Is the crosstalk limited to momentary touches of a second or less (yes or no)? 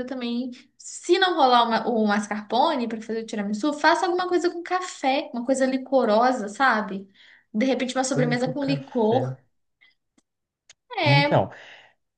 no